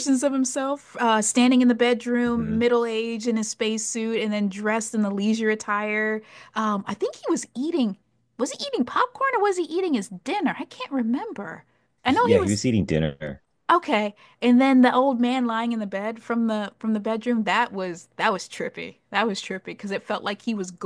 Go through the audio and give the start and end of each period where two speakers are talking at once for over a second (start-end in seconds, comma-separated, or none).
none